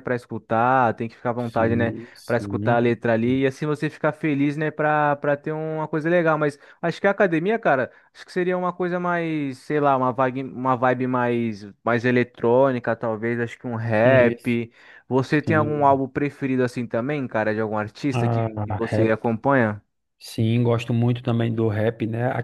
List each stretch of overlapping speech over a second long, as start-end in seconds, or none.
1.5-2.8